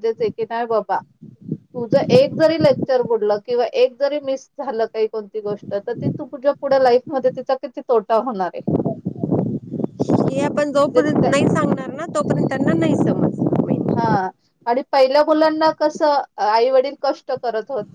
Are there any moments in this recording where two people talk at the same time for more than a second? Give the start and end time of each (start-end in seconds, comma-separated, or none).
none